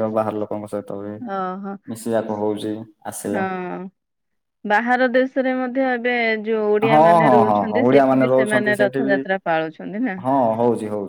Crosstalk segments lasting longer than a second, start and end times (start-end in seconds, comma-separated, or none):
6.9-9.2